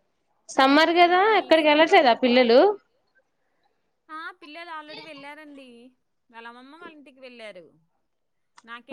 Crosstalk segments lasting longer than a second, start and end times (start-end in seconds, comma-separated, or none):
1.1-2.5